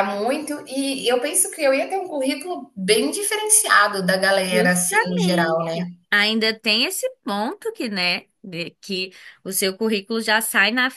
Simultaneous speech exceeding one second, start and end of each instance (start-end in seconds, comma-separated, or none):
4.5-5.9